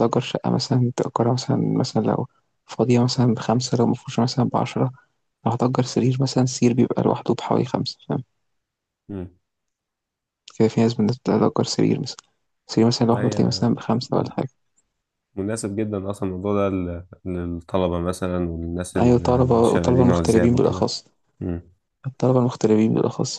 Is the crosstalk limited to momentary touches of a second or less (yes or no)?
no